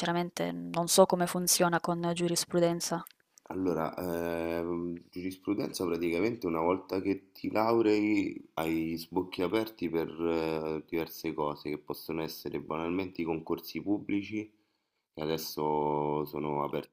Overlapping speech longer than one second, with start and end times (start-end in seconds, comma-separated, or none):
none